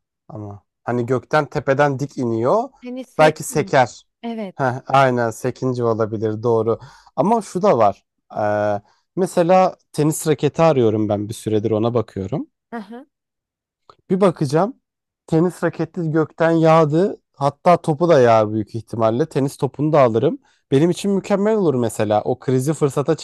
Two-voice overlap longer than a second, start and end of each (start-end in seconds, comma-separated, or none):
none